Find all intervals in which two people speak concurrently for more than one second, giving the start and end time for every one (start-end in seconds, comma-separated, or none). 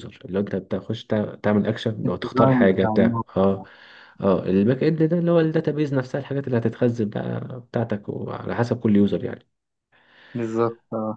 2.0-3.5